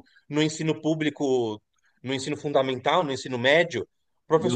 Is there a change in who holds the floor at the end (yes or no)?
no